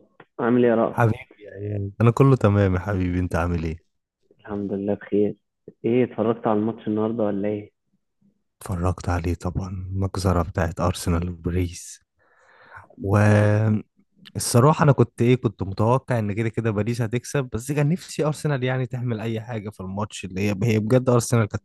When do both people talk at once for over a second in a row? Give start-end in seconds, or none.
none